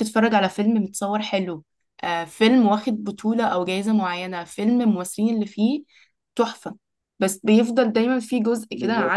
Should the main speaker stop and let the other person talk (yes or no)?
no